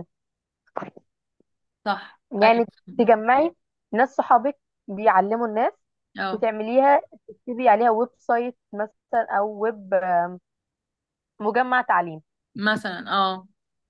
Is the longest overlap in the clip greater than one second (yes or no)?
no